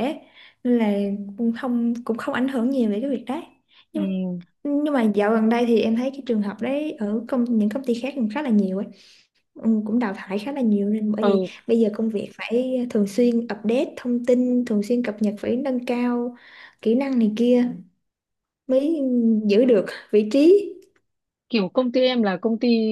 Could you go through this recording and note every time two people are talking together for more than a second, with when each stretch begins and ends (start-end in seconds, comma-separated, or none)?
none